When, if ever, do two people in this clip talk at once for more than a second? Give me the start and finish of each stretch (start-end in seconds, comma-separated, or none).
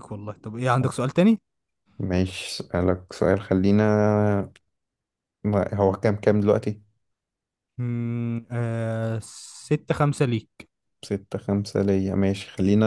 none